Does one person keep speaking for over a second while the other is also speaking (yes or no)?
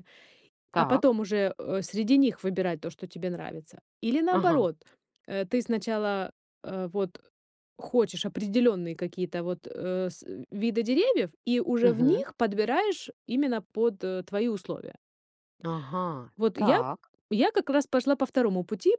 no